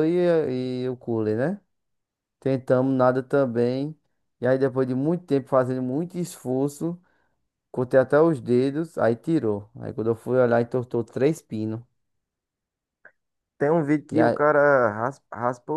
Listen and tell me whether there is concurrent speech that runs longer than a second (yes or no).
no